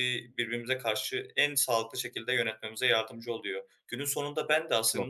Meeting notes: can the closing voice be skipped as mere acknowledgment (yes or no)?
yes